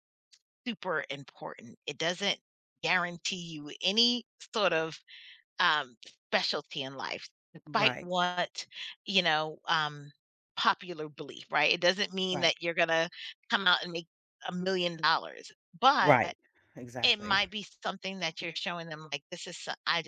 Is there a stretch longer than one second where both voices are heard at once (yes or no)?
no